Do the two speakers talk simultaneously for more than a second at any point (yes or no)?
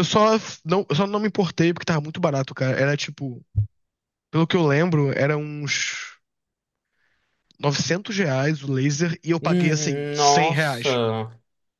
yes